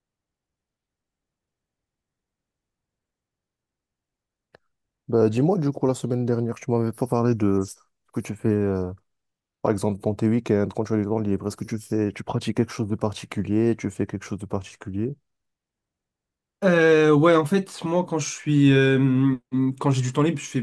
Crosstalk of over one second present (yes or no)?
no